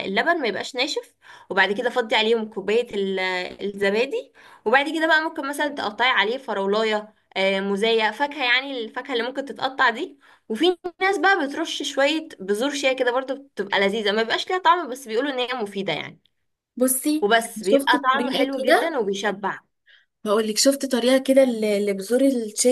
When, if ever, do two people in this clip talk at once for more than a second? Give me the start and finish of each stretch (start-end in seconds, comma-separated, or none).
17.2-18.9